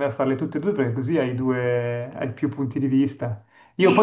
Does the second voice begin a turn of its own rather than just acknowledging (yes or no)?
no